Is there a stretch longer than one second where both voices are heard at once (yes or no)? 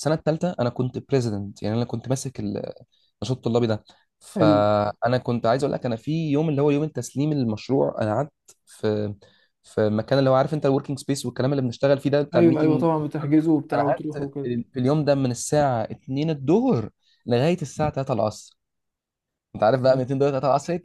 yes